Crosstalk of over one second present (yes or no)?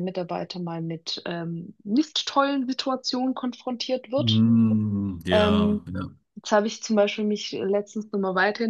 no